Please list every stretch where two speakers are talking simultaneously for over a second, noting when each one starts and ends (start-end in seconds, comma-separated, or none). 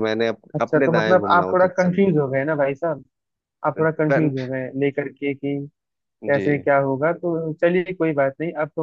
0.6-2.1